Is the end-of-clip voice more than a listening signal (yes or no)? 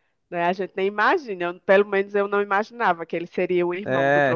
yes